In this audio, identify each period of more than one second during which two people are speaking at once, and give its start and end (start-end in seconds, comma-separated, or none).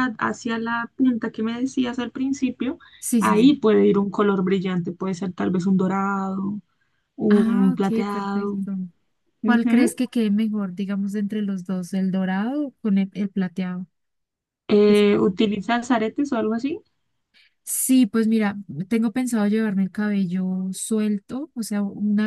7.3-8.6